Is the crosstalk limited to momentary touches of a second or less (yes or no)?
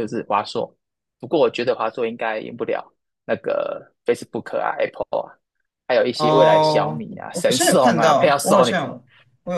no